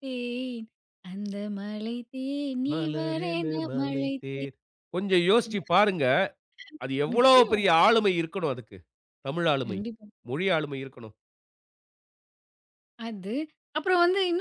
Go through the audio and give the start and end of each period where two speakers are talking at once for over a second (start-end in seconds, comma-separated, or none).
2.7-4.5